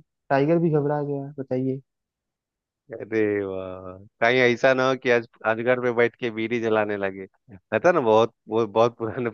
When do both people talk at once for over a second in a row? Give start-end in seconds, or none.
none